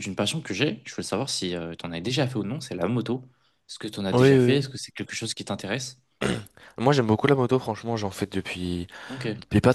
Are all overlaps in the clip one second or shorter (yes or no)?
yes